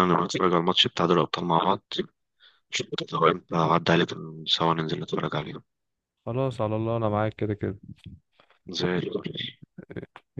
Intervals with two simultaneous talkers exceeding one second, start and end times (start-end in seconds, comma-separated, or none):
none